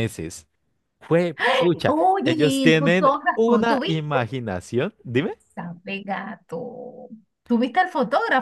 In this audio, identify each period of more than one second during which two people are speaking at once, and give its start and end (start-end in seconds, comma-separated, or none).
1.9-4.2